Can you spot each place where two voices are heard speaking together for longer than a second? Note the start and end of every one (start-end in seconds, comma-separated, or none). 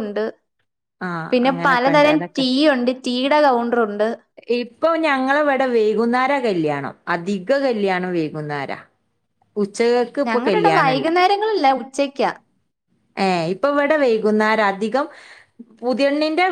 none